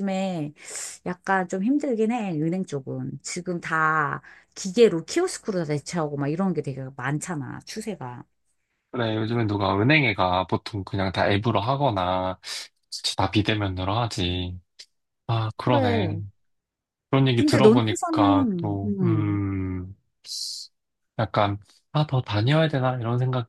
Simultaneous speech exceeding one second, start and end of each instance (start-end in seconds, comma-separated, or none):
17.3-19.4